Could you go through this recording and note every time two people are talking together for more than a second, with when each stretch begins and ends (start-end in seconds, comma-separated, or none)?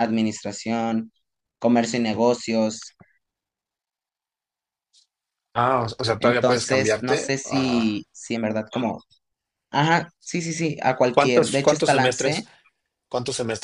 6.2-8.0, 11.1-12.4